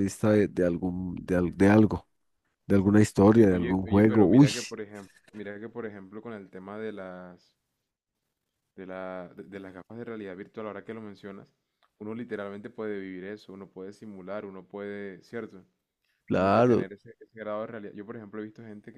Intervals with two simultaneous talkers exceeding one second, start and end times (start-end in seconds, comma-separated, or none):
3.3-4.5